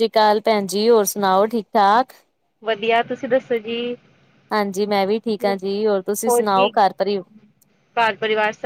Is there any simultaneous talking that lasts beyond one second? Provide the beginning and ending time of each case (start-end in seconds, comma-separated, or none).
none